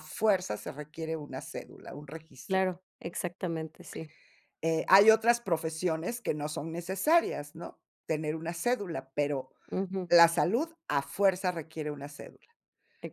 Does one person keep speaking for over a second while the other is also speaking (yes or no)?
no